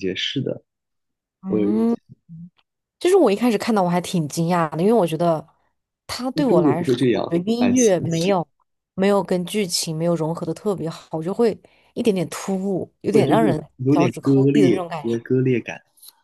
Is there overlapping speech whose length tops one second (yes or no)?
yes